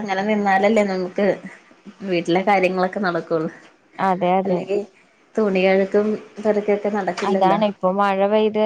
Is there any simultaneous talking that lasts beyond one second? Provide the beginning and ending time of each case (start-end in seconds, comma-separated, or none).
none